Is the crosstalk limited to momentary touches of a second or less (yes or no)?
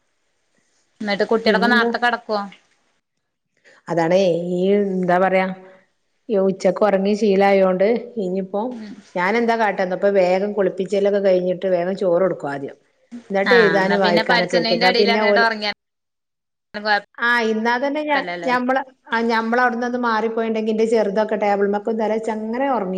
no